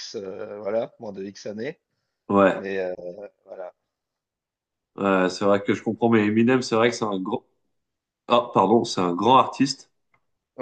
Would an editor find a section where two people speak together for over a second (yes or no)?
no